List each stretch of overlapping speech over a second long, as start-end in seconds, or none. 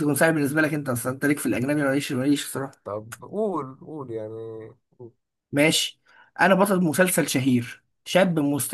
none